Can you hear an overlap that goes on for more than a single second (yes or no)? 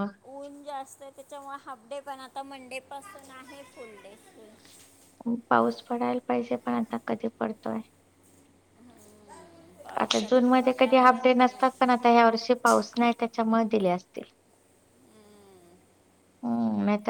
yes